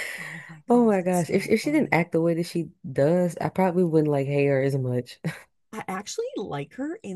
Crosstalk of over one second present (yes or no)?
yes